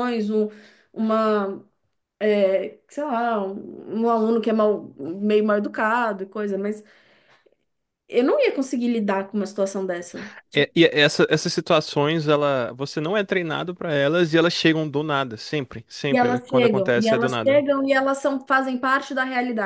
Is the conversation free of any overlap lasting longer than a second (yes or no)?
no